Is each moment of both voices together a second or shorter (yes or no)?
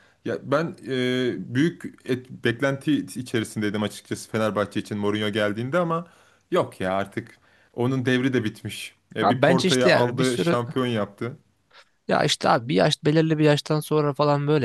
no